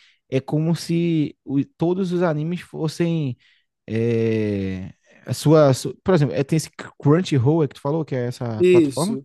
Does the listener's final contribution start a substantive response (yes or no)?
yes